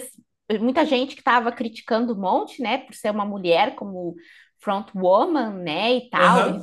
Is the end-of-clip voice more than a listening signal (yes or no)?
no